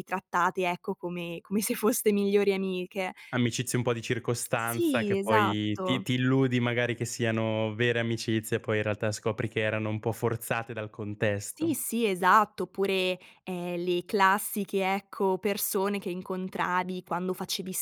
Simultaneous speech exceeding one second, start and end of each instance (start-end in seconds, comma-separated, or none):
4.5-6.1